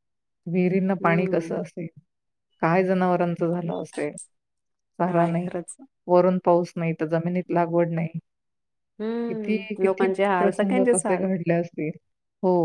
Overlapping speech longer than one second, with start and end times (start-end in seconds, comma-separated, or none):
9.3-11.3